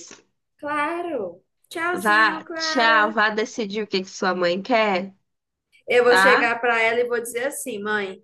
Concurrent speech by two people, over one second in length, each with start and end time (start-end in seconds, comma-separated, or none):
1.9-3.2